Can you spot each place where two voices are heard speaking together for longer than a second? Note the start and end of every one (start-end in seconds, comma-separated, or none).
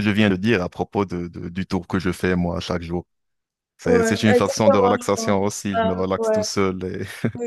3.8-6.5